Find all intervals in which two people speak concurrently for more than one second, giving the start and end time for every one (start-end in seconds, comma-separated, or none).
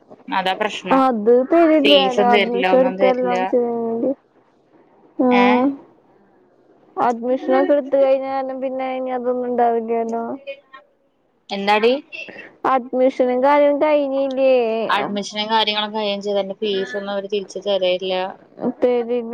1.8-3.4